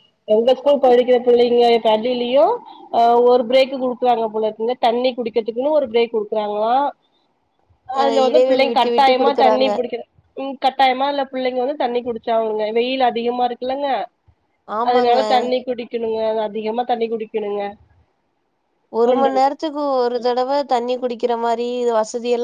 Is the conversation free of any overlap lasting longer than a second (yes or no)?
no